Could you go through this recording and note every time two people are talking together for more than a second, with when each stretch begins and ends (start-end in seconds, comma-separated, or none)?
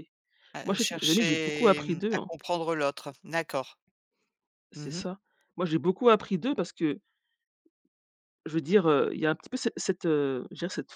0.6-2.3